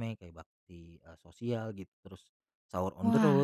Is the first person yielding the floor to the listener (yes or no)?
no